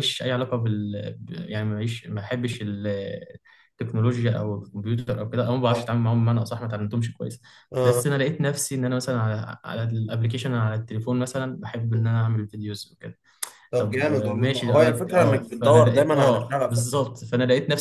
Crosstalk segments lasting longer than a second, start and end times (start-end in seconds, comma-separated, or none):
13.8-17.0